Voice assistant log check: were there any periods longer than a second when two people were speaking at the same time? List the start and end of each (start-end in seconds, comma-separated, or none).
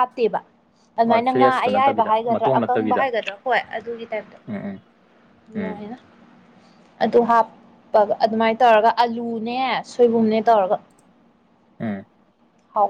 1.1-3.0